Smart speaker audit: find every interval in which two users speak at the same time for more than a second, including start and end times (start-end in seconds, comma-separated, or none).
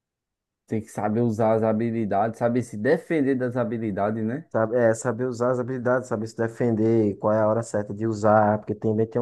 none